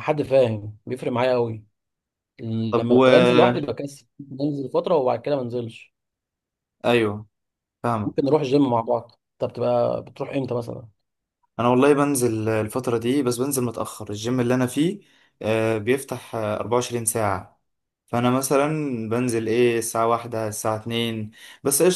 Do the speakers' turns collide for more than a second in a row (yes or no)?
no